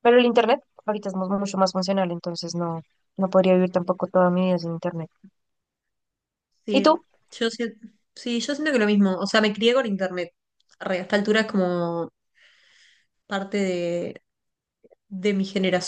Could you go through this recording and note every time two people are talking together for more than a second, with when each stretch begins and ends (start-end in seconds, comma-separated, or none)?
none